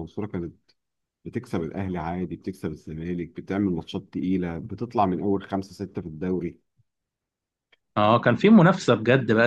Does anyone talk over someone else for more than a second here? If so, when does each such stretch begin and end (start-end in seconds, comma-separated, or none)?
none